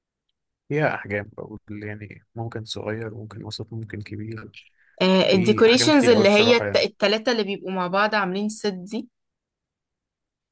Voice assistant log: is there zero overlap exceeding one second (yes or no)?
no